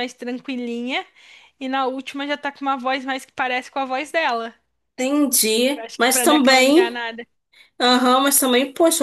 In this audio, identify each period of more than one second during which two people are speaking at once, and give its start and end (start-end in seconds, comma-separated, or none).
5.8-7.0